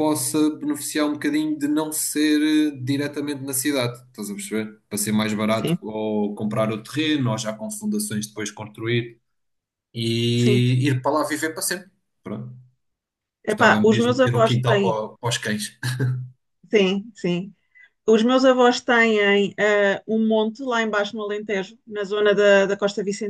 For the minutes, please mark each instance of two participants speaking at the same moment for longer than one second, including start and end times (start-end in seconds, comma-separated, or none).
13.5-15.0